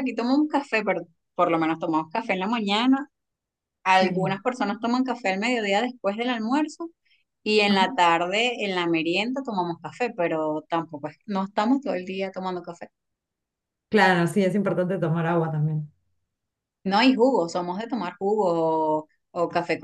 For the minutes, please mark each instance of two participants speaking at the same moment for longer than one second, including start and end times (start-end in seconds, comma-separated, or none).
none